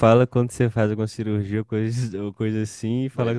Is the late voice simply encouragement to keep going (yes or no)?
yes